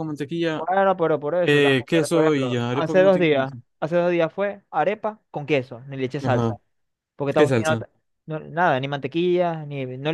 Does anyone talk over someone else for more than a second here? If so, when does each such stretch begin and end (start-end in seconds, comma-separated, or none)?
1.4-3.5